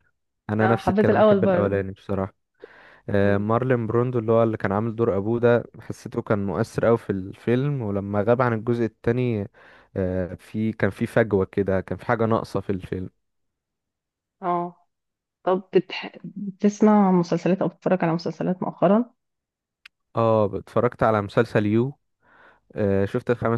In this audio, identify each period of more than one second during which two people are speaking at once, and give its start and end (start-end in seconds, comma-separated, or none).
0.6-1.9